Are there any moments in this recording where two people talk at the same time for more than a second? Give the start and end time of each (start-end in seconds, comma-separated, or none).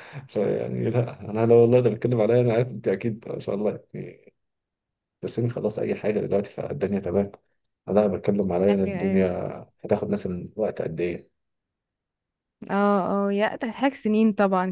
none